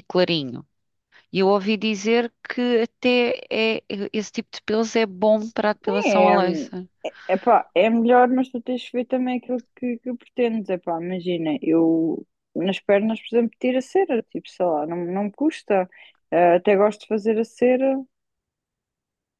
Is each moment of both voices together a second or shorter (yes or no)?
yes